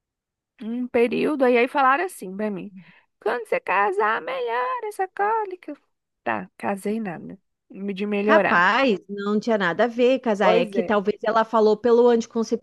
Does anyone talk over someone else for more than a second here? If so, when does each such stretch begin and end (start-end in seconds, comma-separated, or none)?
none